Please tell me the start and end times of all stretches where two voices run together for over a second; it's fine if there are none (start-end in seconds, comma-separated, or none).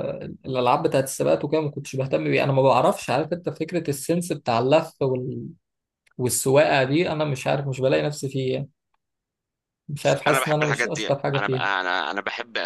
10.3-11.7